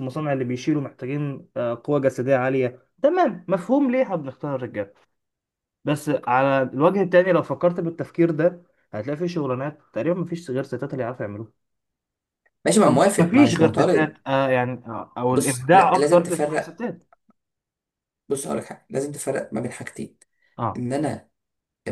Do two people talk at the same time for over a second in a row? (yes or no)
yes